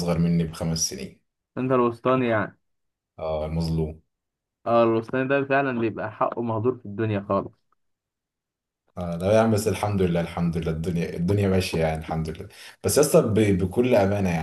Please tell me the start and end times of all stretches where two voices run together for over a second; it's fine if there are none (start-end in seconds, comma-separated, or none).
none